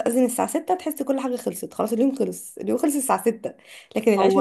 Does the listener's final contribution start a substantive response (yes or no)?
no